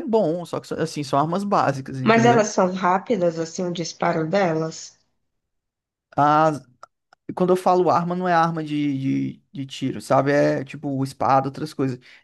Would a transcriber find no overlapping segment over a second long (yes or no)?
yes